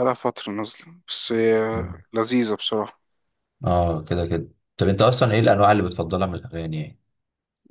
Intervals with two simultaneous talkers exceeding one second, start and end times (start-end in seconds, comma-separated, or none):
none